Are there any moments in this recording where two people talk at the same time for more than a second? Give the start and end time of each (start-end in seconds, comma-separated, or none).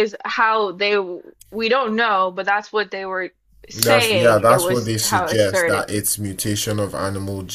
3.7-5.9